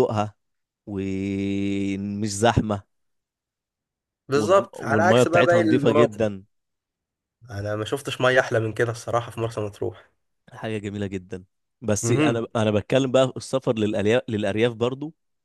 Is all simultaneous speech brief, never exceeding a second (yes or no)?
no